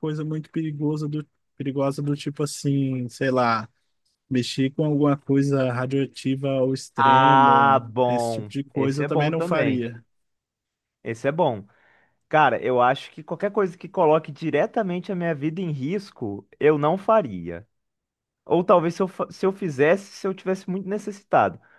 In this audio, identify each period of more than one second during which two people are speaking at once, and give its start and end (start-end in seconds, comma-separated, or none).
7.0-9.9